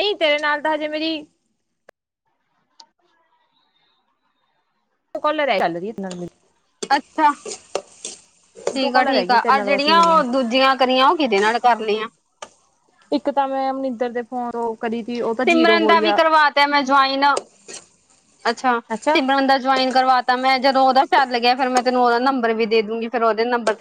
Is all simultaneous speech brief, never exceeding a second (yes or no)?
no